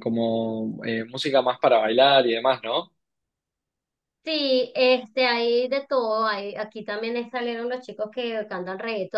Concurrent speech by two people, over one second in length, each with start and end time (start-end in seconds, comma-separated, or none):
none